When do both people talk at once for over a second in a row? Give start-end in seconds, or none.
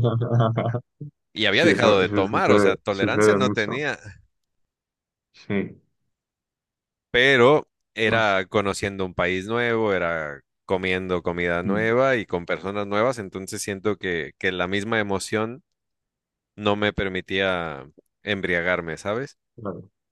1.5-3.8